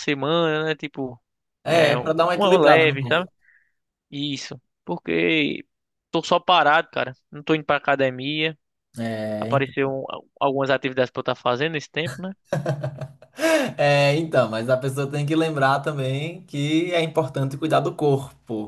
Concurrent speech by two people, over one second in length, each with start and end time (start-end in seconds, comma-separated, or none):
1.6-3.3